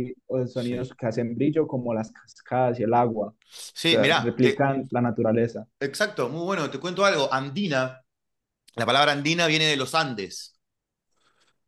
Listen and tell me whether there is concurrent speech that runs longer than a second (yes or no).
yes